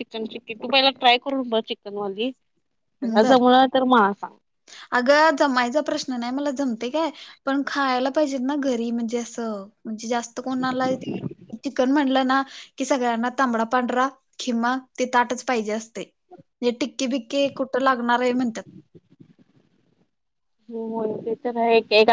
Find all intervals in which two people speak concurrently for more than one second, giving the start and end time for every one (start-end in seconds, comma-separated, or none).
none